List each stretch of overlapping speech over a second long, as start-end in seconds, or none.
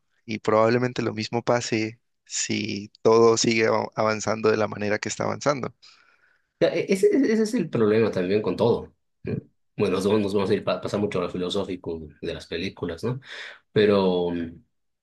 none